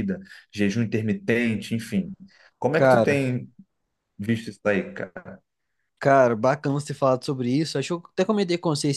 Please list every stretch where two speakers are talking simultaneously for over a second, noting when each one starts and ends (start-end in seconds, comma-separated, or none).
none